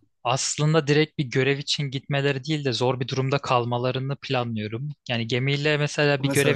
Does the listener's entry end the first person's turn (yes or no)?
no